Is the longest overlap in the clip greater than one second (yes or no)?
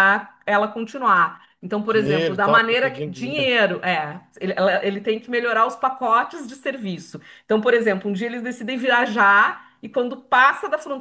yes